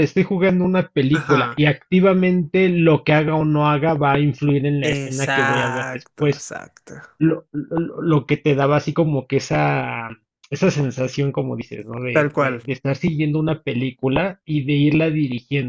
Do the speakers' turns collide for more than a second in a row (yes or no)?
yes